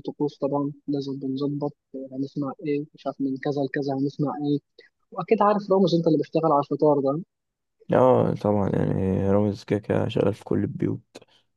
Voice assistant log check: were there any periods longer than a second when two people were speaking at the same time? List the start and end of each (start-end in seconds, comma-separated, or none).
none